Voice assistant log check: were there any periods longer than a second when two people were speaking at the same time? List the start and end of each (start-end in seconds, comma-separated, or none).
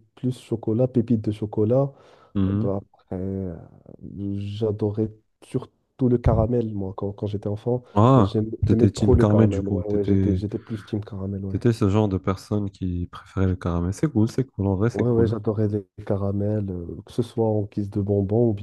7.9-10.4